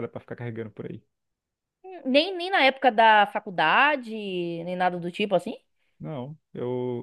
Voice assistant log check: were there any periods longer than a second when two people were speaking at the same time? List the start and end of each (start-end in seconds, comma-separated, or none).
none